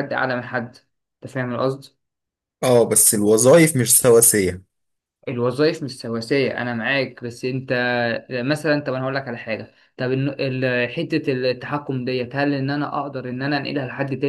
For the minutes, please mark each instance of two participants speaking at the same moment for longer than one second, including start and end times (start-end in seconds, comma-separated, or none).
none